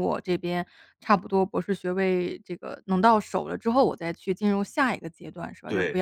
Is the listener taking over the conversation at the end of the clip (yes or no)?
no